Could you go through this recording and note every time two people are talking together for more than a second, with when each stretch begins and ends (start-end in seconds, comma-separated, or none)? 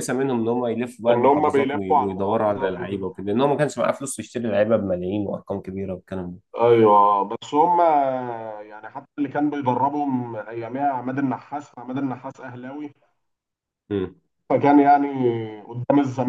1.1-3.1